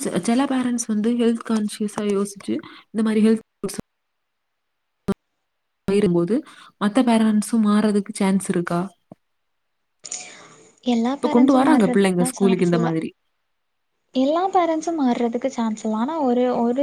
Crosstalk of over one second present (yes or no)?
yes